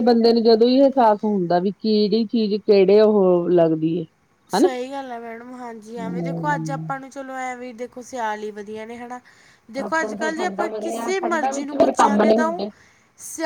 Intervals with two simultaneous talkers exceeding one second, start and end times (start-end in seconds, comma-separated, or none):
none